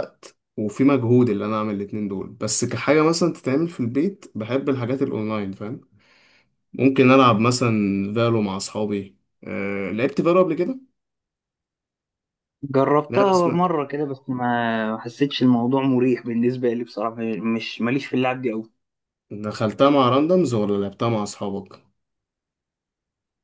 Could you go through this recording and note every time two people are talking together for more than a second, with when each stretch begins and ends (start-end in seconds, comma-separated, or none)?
none